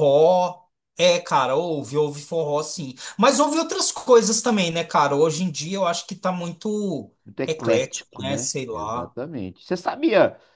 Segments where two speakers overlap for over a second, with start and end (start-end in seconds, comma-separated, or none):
7.5-9.2